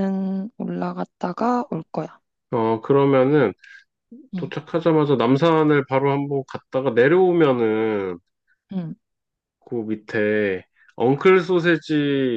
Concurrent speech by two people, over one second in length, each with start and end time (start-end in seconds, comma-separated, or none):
none